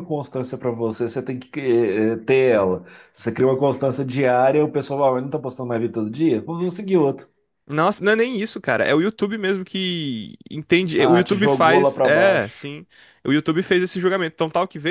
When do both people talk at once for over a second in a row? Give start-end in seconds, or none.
10.9-12.7